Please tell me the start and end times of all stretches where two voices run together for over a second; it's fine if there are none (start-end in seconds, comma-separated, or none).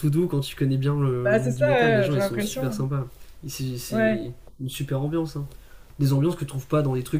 1.2-2.8